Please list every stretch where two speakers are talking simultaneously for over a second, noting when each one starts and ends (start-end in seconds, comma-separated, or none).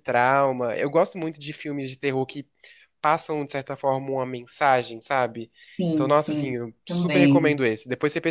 5.9-7.6